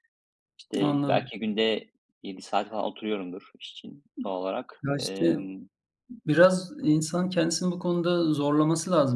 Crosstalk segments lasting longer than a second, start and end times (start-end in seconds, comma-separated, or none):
none